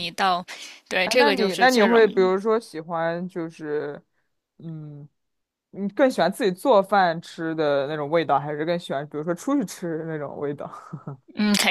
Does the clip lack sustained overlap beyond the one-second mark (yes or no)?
no